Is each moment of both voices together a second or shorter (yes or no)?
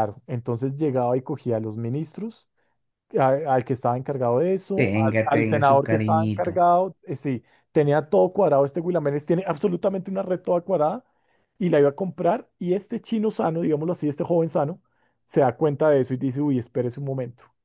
no